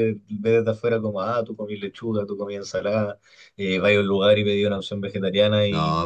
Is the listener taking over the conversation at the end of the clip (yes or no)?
yes